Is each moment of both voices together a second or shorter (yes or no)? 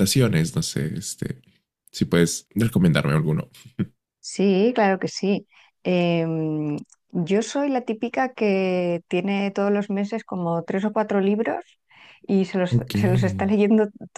yes